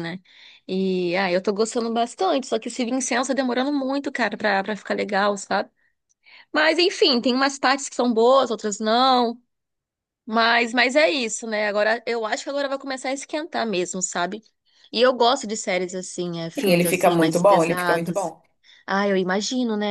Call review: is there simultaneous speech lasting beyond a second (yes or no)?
yes